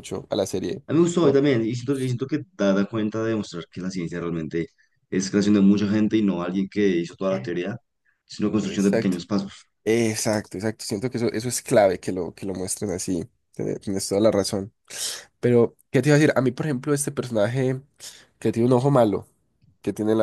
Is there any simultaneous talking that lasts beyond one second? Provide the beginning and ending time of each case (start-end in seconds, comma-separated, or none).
none